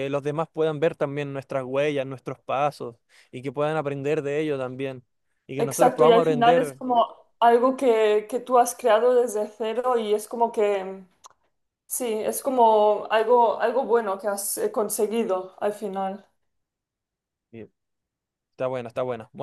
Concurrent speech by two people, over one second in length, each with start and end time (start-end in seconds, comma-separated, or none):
5.6-6.8